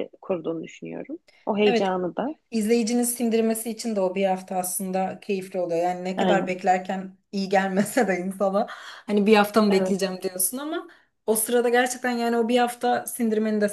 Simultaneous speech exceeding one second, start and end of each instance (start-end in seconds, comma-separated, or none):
none